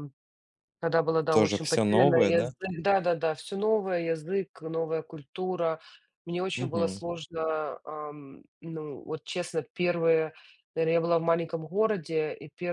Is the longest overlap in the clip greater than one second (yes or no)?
yes